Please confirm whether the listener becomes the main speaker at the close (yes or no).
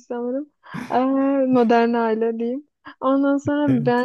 no